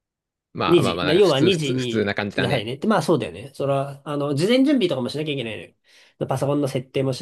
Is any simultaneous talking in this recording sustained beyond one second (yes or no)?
yes